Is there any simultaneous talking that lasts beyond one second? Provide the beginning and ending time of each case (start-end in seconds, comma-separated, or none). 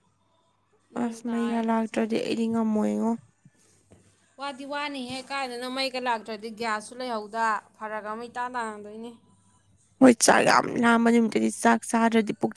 1.0-2.4